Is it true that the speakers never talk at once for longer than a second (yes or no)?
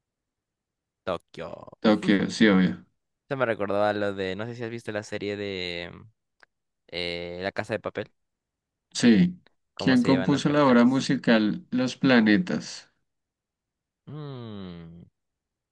no